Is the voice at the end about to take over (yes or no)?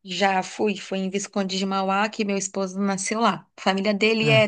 no